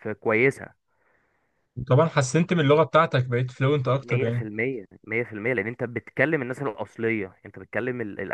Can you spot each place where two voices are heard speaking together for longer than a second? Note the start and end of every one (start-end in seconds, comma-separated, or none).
none